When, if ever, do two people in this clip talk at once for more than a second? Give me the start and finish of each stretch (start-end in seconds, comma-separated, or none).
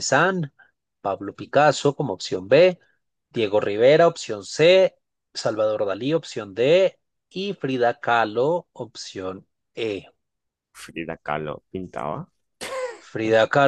none